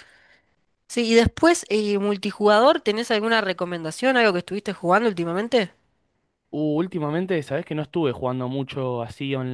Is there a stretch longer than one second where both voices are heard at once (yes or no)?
no